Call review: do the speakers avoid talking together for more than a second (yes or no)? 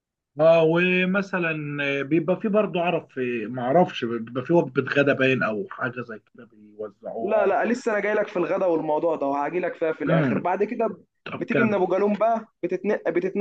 yes